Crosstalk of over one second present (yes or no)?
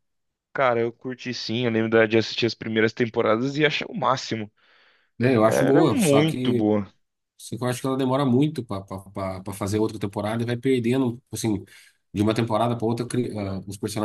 yes